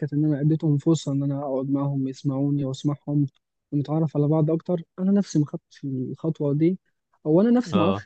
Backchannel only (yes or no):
yes